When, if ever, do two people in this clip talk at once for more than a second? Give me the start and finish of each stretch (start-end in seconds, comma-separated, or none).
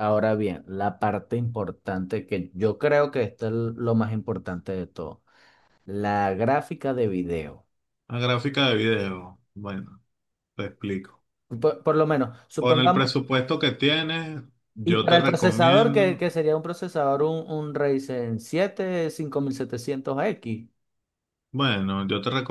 14.8-16.2